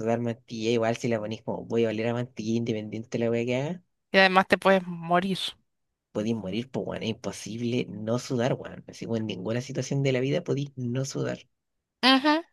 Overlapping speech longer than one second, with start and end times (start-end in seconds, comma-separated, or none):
none